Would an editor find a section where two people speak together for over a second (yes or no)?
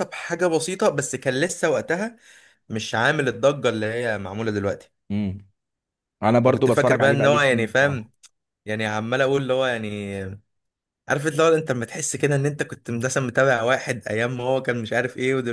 yes